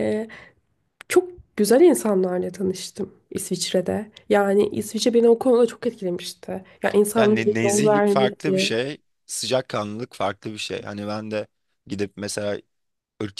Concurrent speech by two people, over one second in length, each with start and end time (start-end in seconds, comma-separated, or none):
7.2-8.8